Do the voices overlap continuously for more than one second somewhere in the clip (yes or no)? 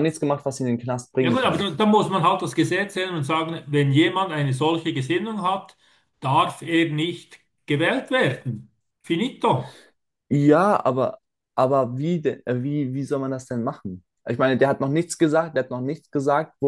no